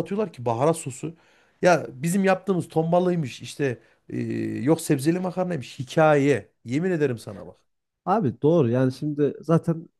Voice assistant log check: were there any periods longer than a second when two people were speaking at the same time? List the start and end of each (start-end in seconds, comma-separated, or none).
none